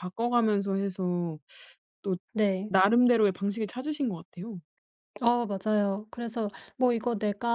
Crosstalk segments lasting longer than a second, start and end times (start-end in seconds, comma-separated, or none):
none